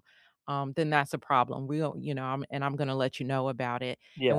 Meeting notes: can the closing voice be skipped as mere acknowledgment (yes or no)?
yes